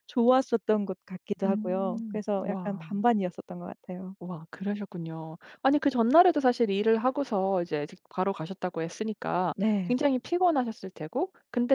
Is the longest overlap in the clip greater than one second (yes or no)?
yes